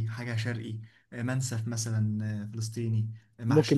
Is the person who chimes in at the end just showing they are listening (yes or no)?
no